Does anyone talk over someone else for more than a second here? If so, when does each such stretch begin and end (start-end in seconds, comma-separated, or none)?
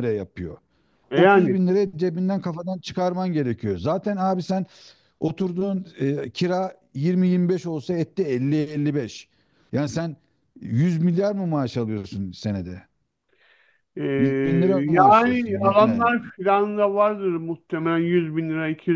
14.9-16.1